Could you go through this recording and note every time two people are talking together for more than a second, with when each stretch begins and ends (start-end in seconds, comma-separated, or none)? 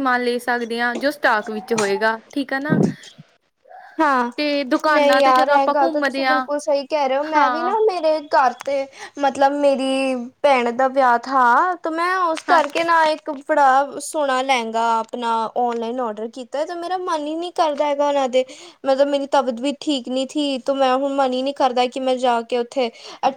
4.9-6.5